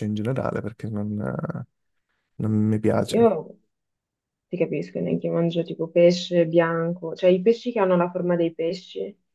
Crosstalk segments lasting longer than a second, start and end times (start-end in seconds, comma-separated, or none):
none